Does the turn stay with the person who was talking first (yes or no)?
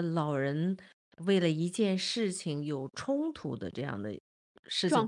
no